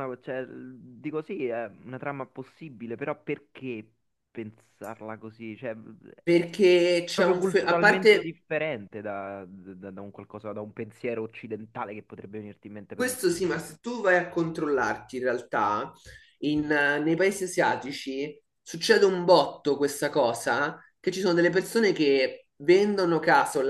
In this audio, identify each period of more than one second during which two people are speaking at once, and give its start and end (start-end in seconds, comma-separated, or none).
7.1-8.3